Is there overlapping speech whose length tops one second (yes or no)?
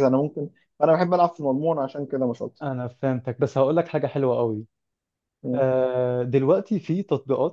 no